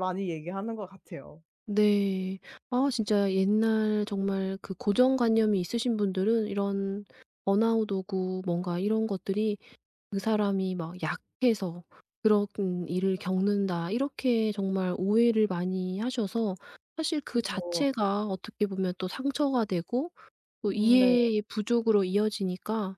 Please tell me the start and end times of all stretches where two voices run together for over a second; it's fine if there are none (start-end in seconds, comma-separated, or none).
none